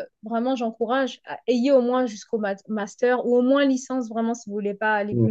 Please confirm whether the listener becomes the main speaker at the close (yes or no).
no